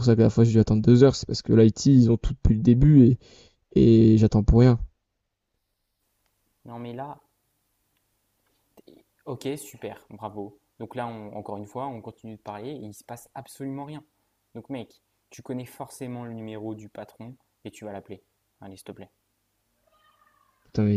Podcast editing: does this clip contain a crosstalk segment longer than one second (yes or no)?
no